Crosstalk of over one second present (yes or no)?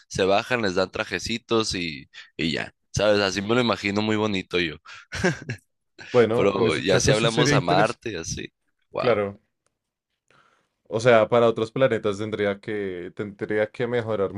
yes